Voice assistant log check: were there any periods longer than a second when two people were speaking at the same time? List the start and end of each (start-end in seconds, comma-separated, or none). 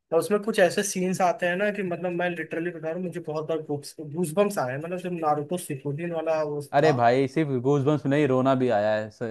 none